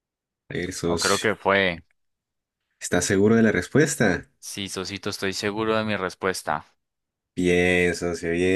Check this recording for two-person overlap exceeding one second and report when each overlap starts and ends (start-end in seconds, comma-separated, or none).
none